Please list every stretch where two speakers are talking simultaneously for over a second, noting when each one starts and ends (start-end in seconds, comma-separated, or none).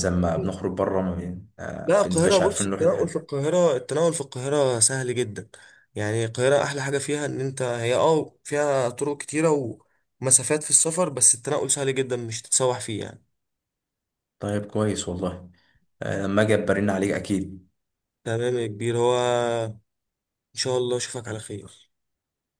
1.8-3.3